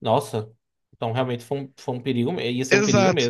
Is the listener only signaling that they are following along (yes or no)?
no